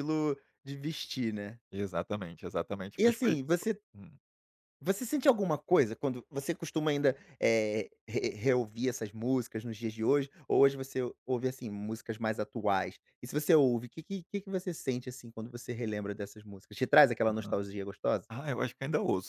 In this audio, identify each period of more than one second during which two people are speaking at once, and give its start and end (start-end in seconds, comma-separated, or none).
none